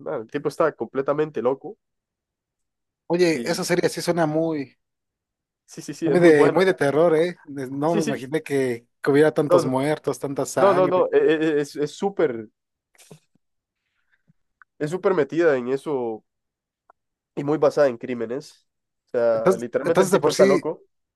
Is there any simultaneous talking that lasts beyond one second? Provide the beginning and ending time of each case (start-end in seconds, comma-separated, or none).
19.3-20.6